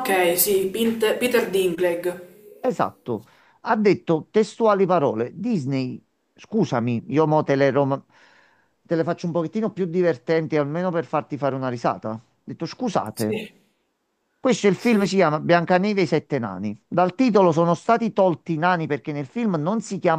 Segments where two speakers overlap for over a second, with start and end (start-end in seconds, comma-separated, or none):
none